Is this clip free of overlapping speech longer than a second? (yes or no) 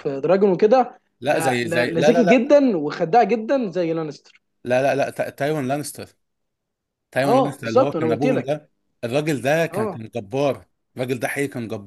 no